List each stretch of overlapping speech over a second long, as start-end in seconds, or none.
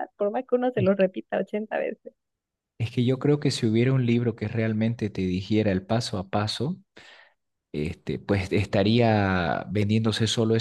none